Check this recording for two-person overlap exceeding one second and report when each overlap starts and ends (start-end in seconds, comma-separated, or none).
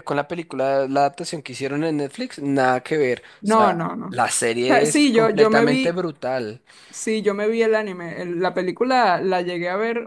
3.4-6.0